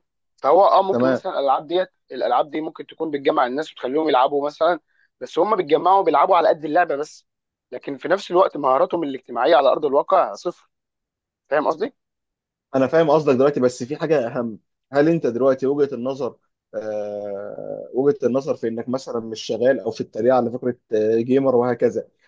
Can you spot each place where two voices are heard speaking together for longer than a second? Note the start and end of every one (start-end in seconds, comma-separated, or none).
none